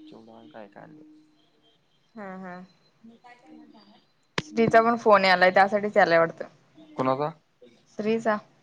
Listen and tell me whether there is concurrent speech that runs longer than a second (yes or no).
no